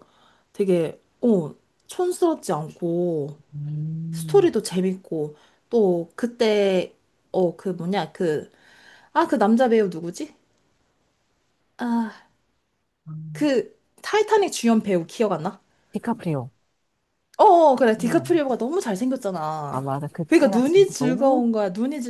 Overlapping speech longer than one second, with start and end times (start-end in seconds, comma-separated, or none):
19.7-21.4